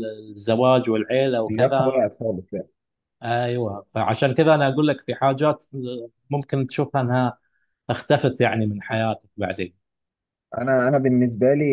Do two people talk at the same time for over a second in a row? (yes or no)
no